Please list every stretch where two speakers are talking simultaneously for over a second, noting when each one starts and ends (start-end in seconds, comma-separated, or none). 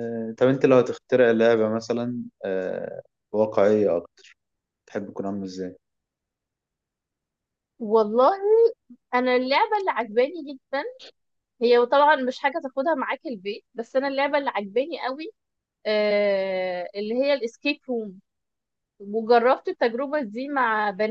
none